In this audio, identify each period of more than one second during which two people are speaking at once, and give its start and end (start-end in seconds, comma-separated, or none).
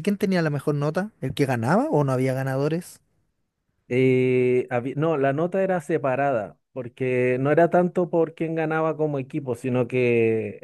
none